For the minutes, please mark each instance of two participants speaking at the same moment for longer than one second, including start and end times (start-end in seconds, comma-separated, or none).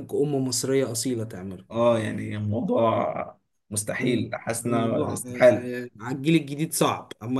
4.0-5.7